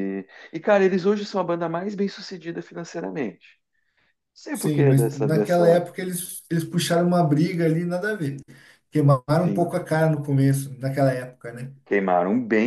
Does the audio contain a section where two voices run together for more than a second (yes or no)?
yes